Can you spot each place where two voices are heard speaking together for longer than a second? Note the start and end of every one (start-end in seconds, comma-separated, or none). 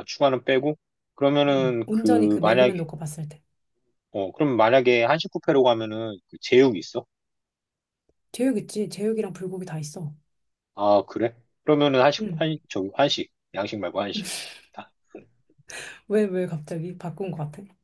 1.5-2.7